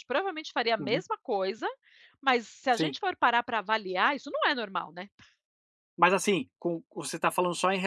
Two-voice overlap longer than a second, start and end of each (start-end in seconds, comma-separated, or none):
none